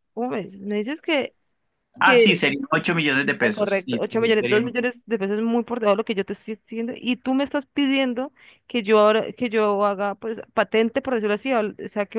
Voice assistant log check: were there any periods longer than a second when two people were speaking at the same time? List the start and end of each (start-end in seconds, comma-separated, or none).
3.4-4.8